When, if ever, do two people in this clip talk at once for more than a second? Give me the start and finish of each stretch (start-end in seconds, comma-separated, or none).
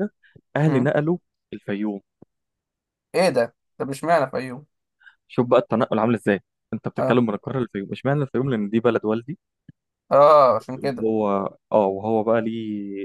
none